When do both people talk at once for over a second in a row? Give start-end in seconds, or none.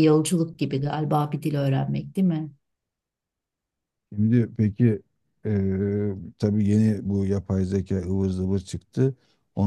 none